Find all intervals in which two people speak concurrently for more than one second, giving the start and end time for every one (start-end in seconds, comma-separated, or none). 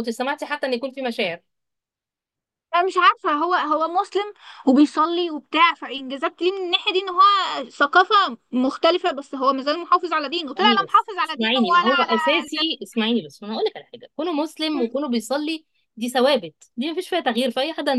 10.6-12.8